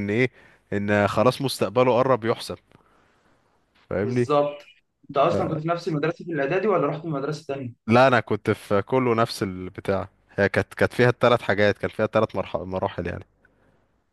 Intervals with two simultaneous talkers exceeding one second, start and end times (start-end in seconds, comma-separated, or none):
none